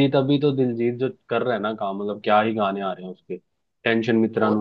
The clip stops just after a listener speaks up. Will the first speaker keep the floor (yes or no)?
yes